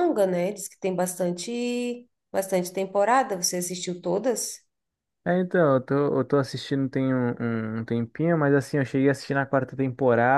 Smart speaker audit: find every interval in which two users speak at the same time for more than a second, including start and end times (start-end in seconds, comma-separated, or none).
none